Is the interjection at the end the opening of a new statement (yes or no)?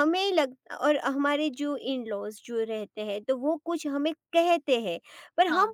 no